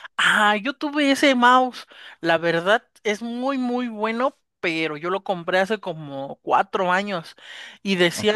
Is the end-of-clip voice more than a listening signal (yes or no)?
no